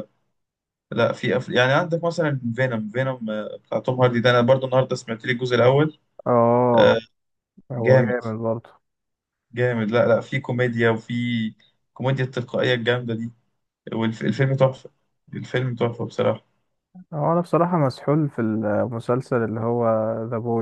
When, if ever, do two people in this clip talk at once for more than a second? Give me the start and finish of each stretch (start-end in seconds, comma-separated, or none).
none